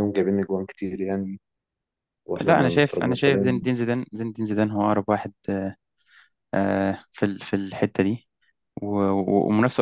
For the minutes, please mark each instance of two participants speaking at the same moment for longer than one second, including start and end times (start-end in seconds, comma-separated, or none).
2.4-3.7